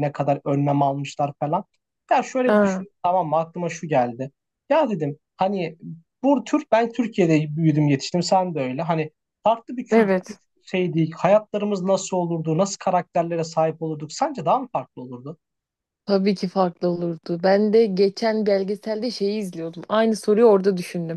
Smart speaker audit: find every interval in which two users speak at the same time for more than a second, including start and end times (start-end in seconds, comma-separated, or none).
none